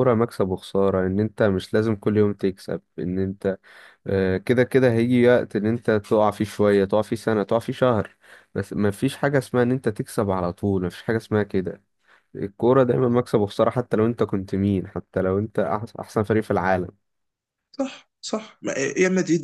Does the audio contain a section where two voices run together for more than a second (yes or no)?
no